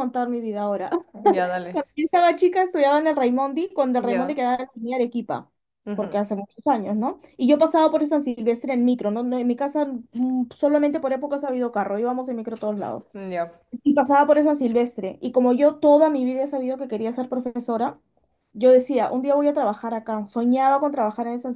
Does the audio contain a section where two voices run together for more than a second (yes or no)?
no